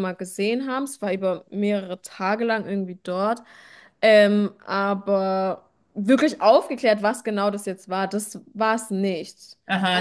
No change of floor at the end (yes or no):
no